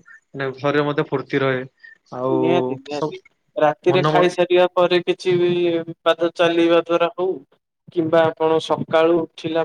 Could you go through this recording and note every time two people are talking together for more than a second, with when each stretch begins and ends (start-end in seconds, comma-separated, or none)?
none